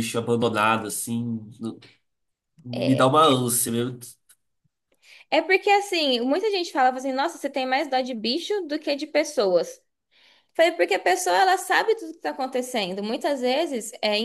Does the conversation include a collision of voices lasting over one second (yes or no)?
no